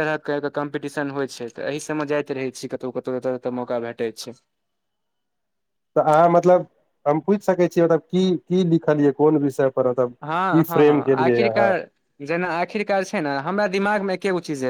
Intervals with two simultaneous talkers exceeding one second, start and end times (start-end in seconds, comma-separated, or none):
10.2-11.7